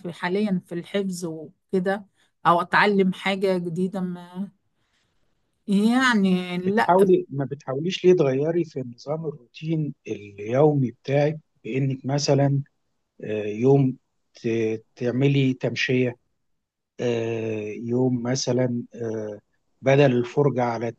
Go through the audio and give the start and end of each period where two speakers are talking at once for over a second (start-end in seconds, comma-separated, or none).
none